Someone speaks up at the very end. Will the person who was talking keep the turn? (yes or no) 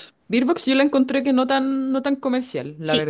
no